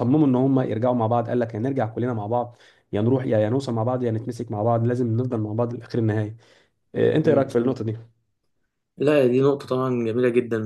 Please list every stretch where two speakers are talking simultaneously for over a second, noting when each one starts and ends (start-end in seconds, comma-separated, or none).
none